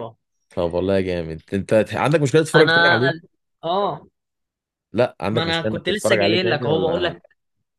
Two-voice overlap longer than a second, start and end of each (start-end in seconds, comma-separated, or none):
5.3-7.2